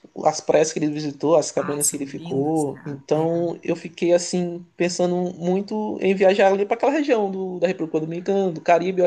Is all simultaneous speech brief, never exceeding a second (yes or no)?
no